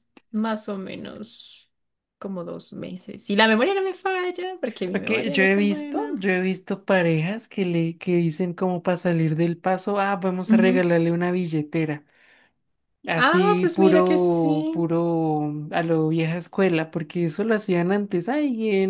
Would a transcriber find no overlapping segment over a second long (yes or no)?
no